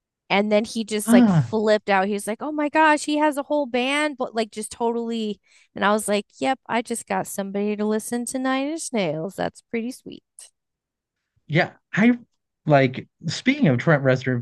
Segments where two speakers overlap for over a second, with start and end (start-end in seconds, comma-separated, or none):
none